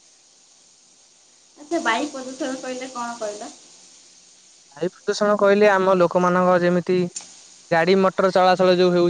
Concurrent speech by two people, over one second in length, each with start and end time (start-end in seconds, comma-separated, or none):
none